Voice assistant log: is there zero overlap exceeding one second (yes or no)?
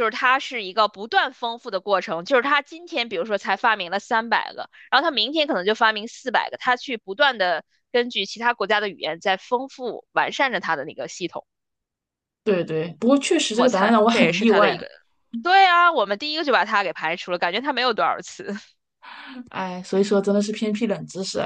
no